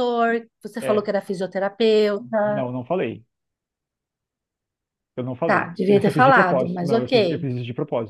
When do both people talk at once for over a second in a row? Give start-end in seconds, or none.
5.5-7.5